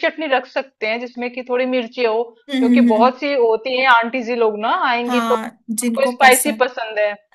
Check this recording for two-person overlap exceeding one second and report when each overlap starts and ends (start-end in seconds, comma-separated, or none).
5.1-6.7